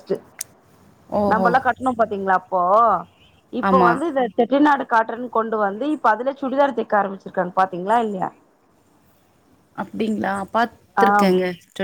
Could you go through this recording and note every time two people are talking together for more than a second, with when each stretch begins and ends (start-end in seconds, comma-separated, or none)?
none